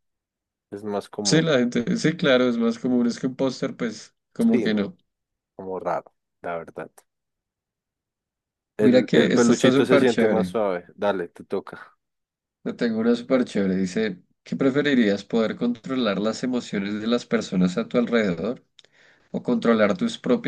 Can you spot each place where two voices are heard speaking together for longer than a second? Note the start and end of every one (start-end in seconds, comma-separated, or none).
8.8-10.5